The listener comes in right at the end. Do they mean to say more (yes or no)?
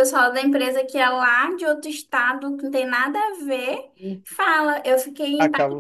no